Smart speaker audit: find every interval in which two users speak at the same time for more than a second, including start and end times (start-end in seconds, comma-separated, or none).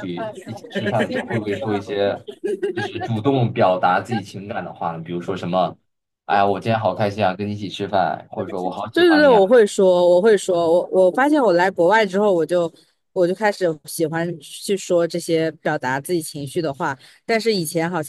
none